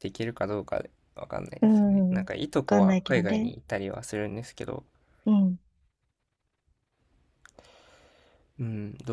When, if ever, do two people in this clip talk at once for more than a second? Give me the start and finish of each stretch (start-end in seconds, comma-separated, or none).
1.6-3.5